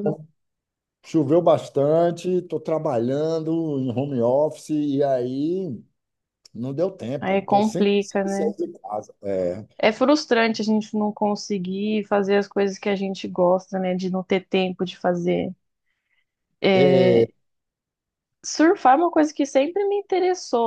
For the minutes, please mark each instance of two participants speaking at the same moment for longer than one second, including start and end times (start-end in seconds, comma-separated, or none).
7.2-8.5